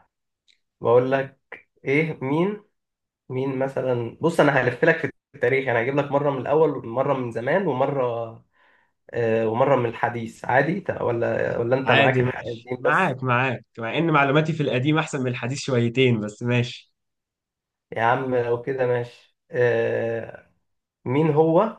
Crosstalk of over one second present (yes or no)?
yes